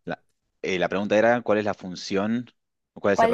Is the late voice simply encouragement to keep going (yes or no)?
no